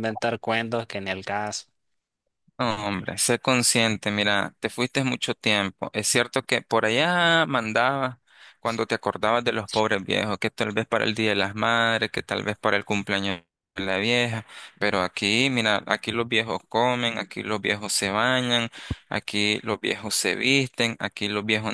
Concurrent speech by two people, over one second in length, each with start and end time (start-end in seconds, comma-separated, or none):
none